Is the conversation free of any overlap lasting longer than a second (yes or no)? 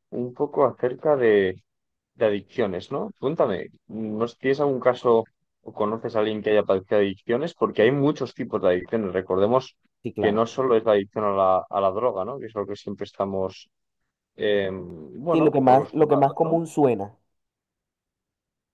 no